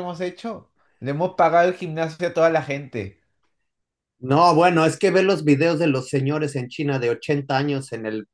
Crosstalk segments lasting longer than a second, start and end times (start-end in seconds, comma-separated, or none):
none